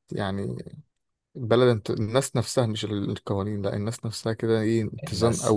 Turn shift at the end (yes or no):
yes